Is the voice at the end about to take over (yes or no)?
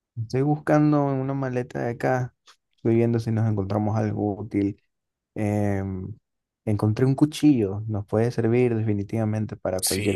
yes